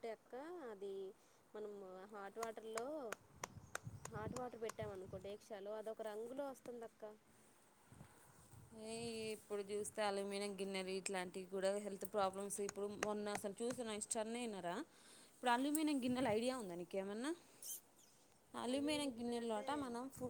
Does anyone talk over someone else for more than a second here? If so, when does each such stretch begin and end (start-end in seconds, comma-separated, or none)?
none